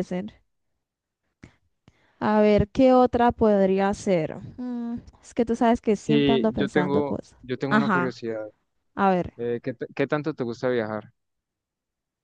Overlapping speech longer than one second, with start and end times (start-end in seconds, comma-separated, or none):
6.0-8.2